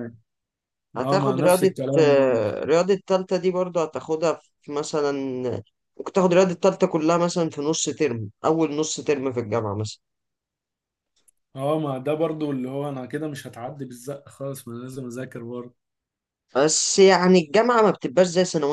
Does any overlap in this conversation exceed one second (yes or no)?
yes